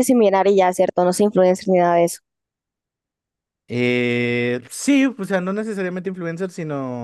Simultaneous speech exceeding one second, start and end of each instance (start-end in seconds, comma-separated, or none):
none